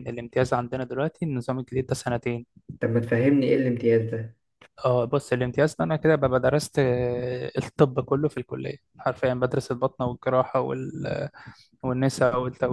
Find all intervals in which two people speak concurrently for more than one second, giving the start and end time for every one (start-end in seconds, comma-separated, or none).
none